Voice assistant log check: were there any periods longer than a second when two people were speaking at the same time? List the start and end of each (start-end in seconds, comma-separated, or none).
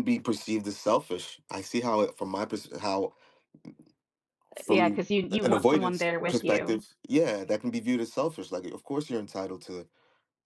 4.7-6.8